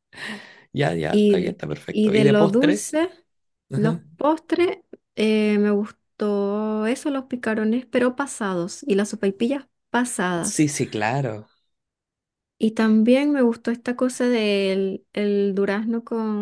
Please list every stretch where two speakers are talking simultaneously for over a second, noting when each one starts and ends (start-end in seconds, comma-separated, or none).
1.1-2.9